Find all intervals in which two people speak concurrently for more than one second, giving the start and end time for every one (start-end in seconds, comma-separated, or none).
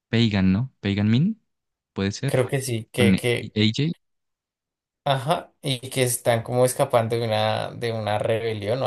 none